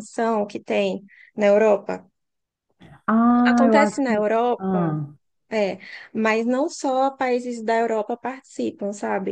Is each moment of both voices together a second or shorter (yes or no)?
no